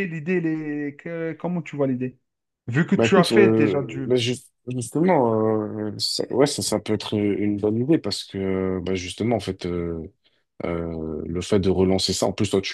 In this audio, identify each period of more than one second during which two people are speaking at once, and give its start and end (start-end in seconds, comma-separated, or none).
3.0-4.2